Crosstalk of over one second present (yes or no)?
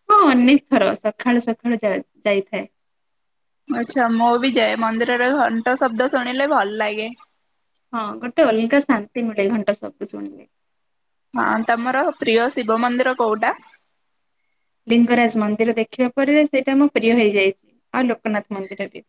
no